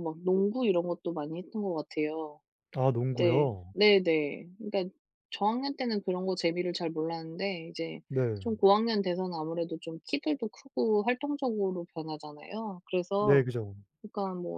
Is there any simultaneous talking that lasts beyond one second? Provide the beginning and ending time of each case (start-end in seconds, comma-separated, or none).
none